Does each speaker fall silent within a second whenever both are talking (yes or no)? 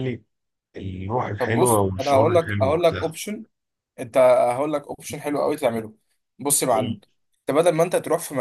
no